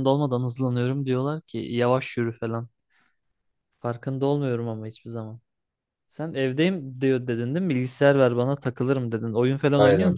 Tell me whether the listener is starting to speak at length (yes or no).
yes